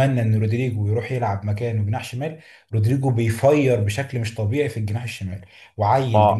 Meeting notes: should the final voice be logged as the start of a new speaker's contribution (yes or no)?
no